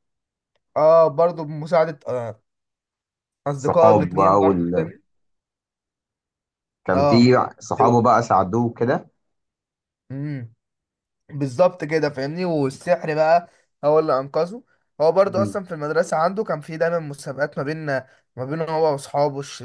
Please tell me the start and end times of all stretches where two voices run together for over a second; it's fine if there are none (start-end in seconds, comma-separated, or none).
3.6-4.9